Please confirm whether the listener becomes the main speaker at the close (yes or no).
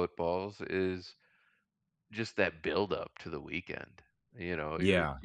no